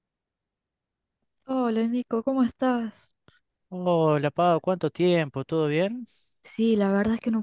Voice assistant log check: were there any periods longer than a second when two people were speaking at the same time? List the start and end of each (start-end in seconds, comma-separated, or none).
none